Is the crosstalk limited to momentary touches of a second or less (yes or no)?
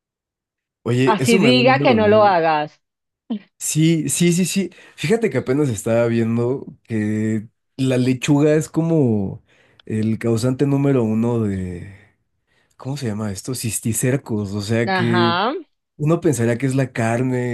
no